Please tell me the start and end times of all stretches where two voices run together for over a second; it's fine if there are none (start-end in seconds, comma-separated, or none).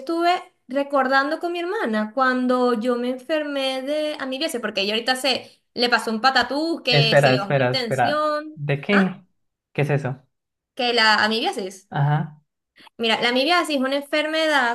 6.9-9.2